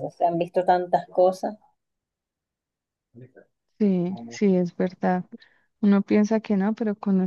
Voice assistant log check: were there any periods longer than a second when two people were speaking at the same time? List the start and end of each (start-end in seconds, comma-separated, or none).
none